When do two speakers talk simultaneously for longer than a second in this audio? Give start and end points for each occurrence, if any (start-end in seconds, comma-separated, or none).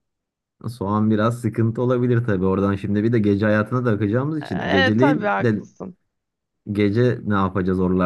4.4-5.7